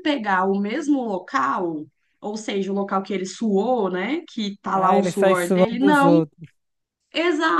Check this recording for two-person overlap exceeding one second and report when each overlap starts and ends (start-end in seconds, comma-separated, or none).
4.7-6.2